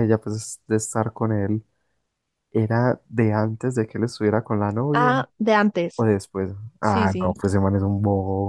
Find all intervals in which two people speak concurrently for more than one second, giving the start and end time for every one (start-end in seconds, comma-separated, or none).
none